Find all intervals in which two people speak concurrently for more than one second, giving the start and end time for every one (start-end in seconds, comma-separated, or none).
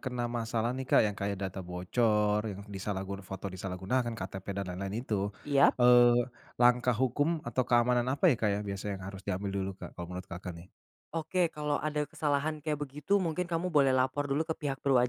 none